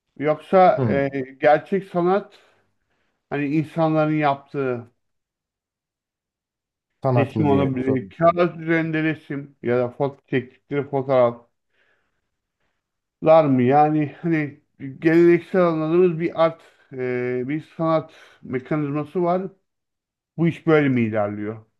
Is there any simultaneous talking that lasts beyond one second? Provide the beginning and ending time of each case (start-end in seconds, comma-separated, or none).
7.1-8.4